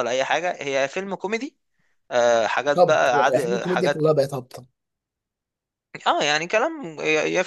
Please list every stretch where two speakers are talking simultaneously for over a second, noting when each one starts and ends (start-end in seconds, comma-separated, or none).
2.8-4.1